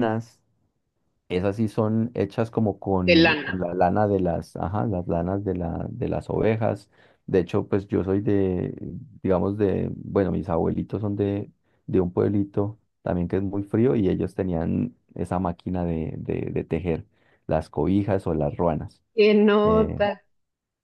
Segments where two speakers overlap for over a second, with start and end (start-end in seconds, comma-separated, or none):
none